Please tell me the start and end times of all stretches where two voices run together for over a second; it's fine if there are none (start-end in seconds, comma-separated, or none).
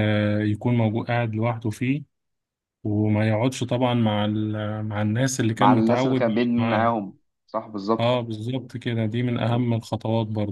5.5-7.0